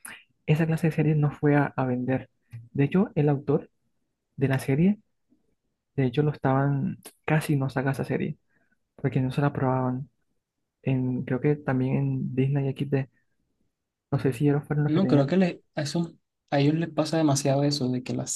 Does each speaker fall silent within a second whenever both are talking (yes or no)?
yes